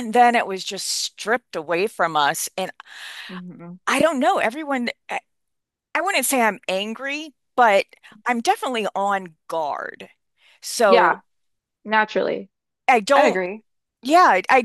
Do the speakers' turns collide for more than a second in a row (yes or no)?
no